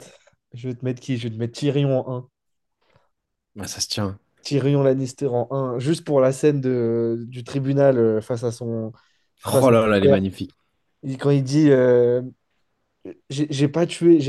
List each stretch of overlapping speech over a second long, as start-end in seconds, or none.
none